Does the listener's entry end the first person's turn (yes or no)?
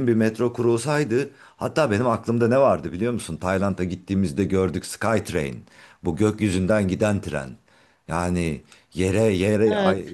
no